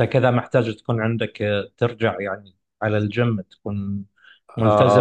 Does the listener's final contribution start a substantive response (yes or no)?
yes